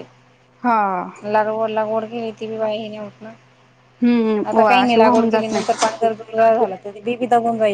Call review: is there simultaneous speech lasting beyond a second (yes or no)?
yes